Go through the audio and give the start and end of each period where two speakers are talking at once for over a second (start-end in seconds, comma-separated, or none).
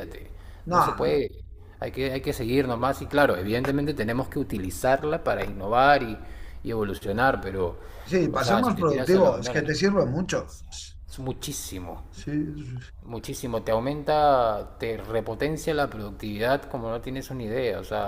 8.3-9.8